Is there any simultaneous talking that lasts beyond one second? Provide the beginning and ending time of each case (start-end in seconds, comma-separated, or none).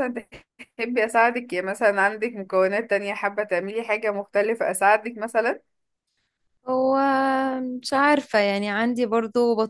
none